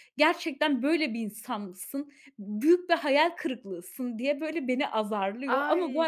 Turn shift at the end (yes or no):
yes